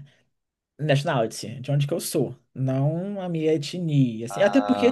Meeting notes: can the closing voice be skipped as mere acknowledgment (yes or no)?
yes